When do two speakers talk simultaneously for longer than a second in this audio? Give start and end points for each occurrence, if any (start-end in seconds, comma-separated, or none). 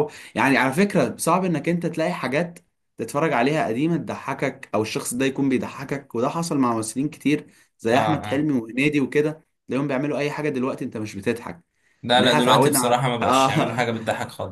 12.1-13.9